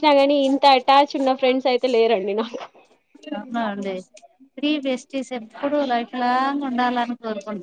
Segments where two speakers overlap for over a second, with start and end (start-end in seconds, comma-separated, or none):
none